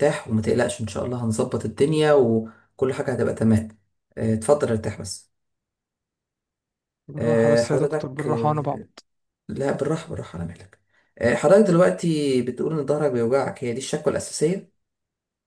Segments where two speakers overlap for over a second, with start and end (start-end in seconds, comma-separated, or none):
7.2-8.9